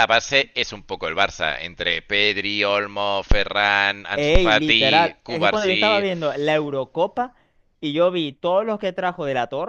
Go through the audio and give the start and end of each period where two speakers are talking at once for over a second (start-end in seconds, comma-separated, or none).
4.1-6.1